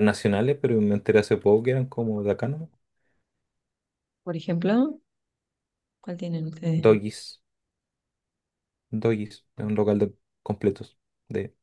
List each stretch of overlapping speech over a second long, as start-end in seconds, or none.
none